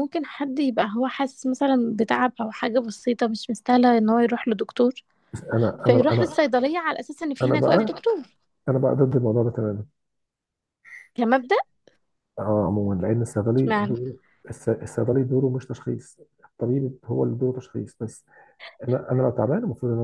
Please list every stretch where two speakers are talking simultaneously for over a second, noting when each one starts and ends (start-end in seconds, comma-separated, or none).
none